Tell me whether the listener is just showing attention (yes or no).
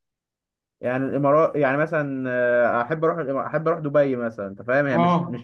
yes